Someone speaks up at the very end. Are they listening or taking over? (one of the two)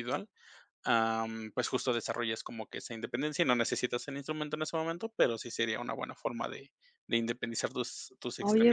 taking over